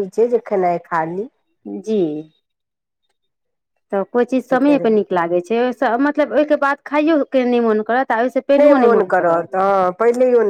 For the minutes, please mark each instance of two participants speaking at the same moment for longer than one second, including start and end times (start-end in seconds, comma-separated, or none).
none